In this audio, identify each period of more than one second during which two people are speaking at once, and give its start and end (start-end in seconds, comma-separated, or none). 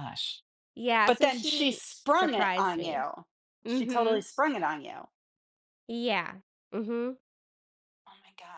1.1-3.0